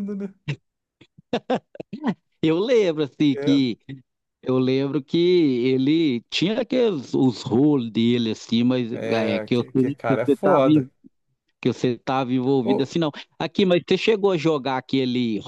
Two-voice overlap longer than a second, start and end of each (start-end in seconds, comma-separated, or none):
8.9-10.7